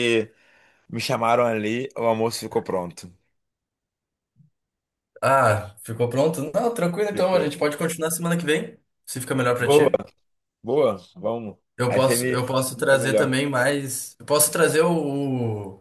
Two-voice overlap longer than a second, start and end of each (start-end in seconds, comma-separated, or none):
11.8-13.3